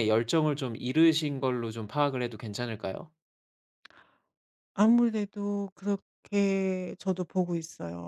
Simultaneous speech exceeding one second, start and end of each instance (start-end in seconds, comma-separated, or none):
none